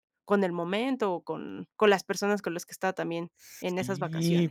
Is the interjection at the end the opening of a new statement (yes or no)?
yes